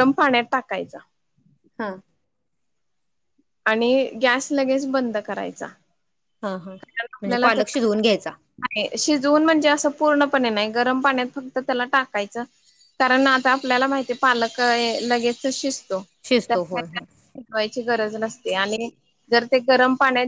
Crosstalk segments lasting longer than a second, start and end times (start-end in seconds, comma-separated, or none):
none